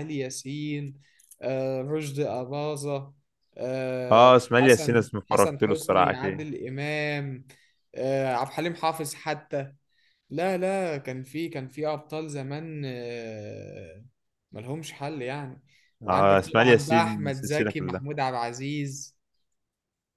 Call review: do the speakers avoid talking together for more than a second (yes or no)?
no